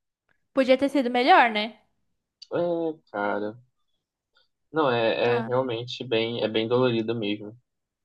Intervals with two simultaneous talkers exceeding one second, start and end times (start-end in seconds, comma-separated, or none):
none